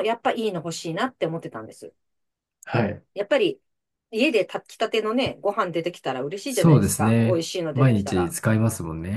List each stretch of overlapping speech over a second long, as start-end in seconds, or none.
6.5-8.3